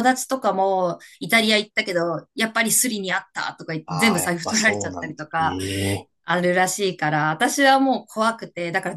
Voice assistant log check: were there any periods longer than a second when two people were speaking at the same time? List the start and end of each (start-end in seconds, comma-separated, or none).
3.9-5.4